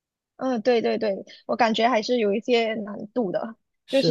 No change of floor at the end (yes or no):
yes